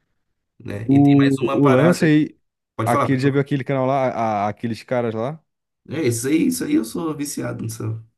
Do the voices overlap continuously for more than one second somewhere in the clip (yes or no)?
yes